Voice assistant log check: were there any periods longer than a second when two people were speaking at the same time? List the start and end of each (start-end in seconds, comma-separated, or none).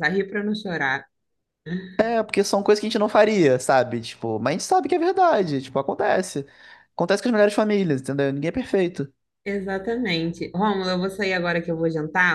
none